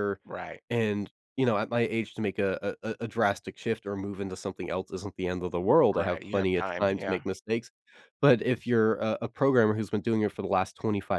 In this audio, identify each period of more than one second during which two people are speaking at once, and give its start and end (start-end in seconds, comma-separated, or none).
5.9-7.2